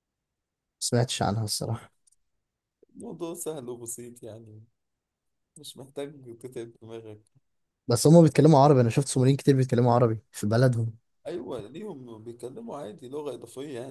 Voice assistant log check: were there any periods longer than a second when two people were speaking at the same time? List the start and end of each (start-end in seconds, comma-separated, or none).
none